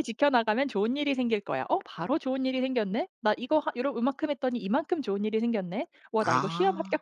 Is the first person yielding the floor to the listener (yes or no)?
no